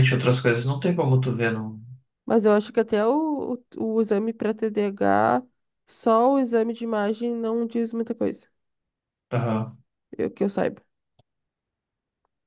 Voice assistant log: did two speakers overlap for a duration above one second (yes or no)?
no